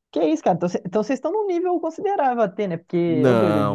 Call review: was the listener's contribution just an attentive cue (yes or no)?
no